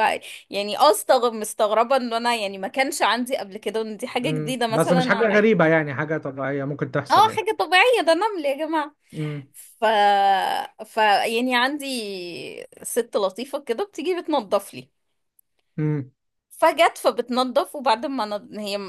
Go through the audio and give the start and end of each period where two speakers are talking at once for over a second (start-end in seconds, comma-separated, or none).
4.2-5.5